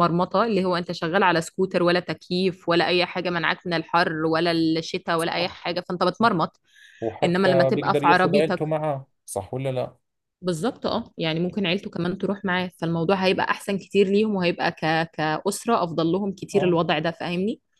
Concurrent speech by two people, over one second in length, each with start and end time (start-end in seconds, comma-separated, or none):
7.2-8.6